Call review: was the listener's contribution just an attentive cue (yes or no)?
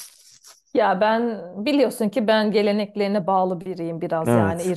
yes